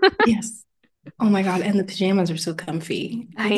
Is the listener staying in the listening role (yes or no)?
no